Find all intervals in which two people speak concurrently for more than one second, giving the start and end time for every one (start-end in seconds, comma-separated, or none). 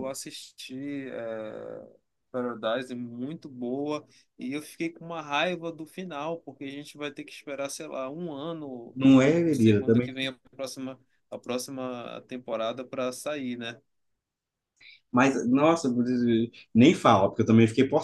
8.9-10.1